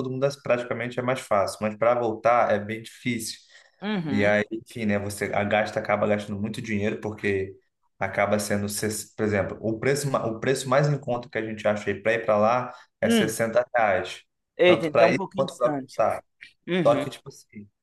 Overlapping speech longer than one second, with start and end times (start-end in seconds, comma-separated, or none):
14.7-16.0